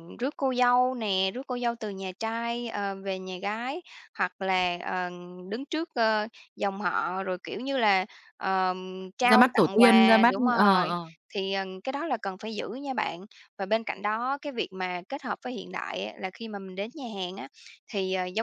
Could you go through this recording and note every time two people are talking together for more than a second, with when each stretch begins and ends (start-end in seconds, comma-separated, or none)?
9.3-10.9